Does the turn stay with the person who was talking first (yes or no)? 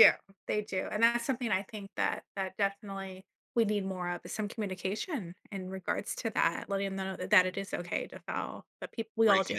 no